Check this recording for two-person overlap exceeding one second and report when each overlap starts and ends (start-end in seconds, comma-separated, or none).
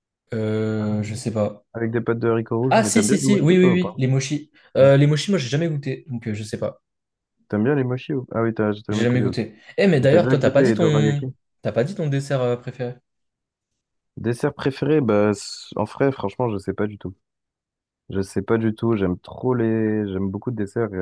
2.7-3.9, 10.0-11.2